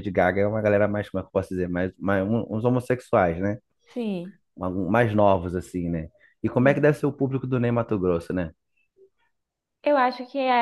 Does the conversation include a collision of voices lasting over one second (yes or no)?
no